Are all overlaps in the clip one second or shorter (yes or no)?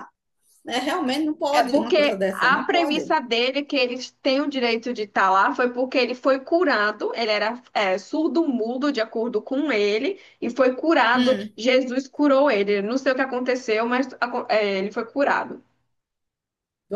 no